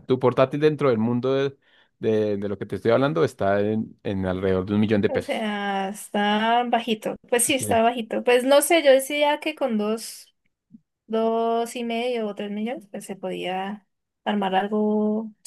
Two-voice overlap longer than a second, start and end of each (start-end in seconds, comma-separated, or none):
none